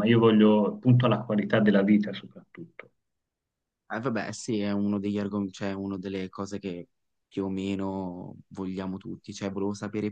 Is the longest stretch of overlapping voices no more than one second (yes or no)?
yes